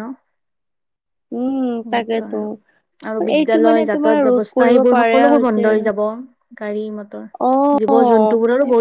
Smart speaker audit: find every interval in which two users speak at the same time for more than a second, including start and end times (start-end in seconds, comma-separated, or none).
3.4-5.9